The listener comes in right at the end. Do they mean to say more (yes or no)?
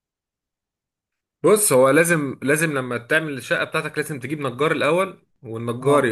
no